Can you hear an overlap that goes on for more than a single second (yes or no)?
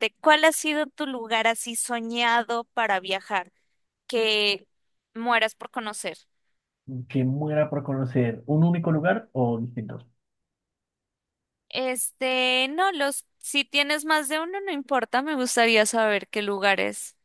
no